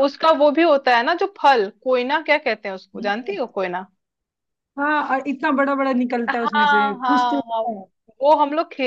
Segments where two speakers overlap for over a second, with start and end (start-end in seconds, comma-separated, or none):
6.3-7.6